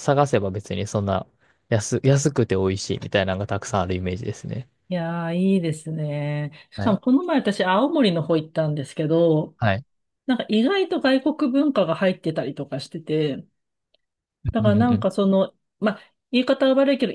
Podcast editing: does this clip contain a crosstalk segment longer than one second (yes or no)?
no